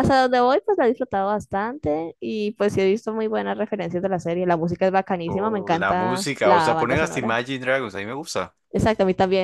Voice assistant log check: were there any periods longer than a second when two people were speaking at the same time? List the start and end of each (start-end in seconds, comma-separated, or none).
5.3-7.4